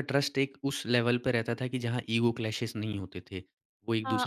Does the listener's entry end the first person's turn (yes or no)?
yes